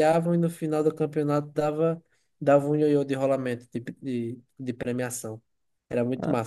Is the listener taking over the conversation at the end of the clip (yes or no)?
yes